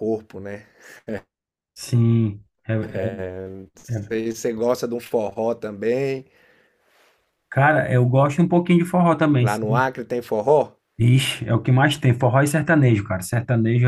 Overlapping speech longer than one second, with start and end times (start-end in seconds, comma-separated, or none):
none